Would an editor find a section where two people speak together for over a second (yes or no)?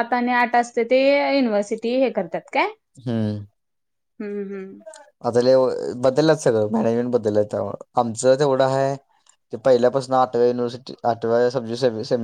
no